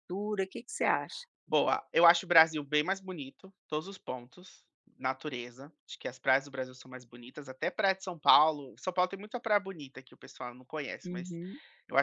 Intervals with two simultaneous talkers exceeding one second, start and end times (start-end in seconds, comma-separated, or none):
none